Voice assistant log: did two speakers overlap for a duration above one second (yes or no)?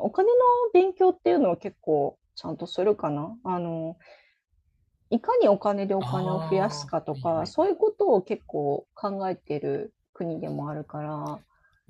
yes